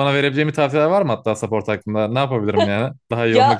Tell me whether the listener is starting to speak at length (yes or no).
yes